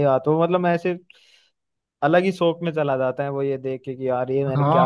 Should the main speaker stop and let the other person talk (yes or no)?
yes